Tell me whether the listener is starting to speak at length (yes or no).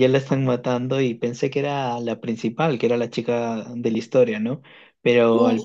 no